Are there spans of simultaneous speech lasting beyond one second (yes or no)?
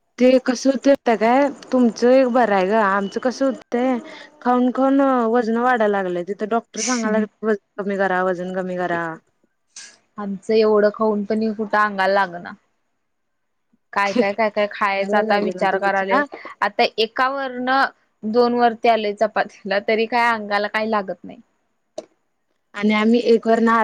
yes